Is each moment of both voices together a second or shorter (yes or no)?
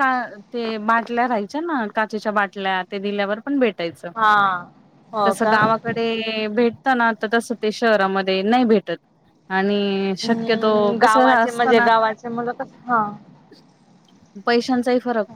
no